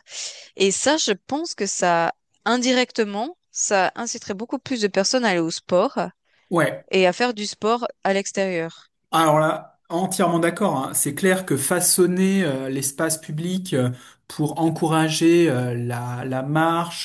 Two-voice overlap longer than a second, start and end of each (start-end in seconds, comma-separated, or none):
none